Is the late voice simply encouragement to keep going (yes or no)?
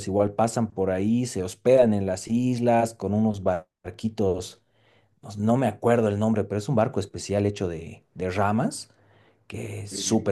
yes